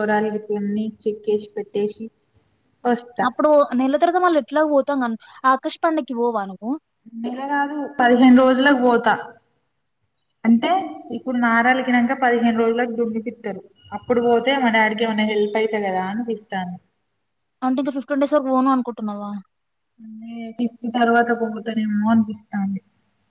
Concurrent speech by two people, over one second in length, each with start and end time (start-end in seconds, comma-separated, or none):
none